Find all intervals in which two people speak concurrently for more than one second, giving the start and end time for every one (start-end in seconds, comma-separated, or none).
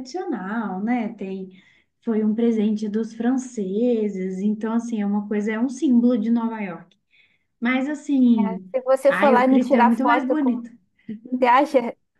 9.1-10.6